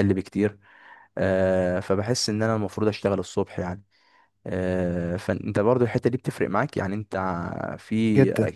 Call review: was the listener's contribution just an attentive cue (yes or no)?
yes